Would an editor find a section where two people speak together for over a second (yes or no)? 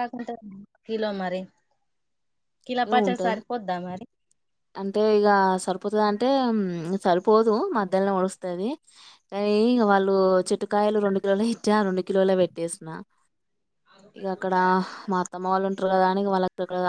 no